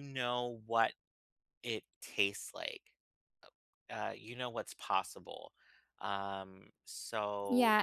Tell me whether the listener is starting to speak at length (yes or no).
yes